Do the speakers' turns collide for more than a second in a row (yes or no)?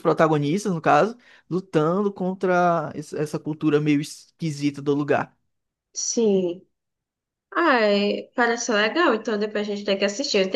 no